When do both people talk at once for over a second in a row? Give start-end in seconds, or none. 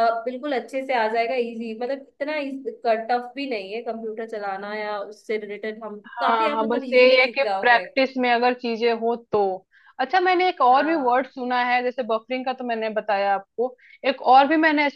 6.1-7.8